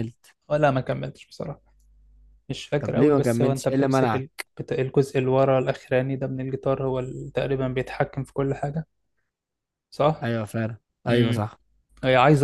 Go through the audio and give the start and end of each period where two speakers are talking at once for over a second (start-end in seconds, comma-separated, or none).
2.8-4.5